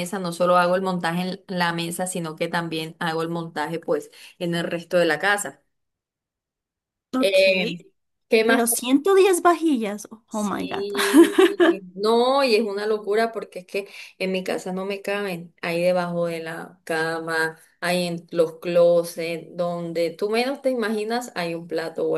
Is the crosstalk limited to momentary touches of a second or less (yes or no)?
yes